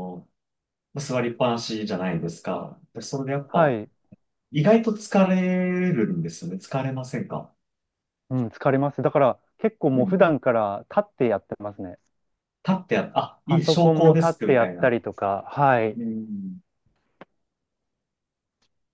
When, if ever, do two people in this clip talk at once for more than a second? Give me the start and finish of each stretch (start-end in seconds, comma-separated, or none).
13.4-15.0